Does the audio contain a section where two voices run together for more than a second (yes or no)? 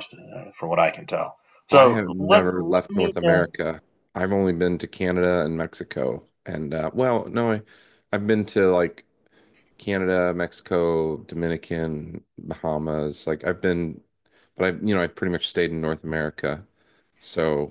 yes